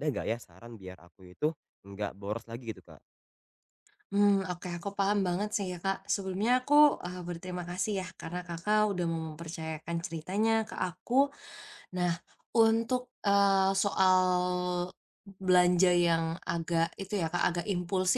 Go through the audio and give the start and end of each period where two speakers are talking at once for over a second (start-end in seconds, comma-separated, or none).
none